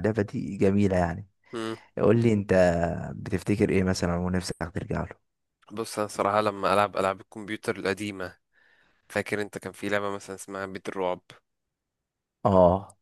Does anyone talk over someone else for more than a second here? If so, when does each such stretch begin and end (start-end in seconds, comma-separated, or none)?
none